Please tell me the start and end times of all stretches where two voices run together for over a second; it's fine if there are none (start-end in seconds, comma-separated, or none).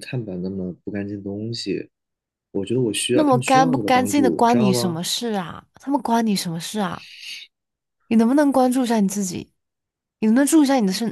3.1-5.0